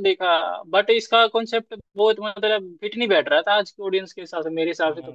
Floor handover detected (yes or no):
yes